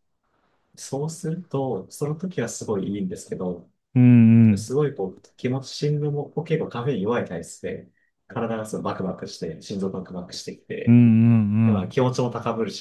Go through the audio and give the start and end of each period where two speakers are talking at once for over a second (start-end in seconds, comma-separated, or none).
none